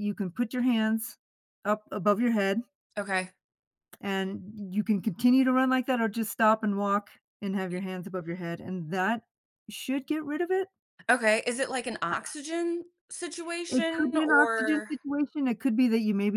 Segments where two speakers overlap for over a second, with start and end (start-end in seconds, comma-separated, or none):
13.7-14.9